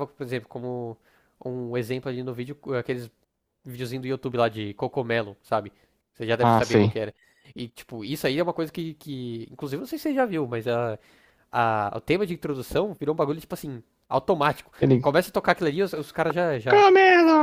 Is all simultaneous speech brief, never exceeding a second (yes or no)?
yes